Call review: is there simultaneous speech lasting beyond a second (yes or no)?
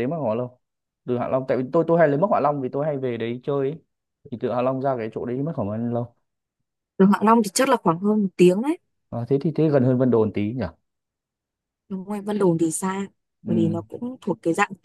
no